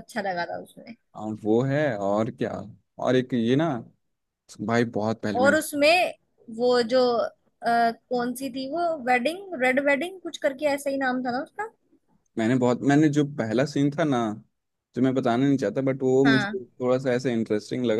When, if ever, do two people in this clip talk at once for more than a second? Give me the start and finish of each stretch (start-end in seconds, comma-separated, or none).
none